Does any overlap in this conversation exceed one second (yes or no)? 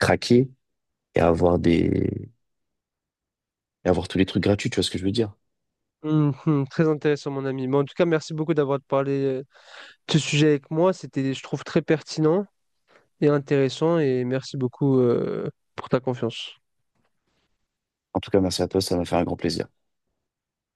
no